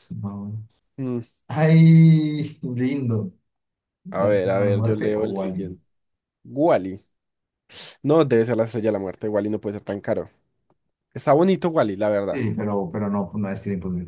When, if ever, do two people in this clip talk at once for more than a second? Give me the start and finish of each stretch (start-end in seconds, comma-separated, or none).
4.2-5.8